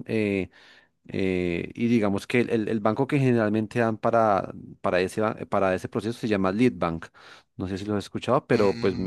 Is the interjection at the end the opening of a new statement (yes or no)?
yes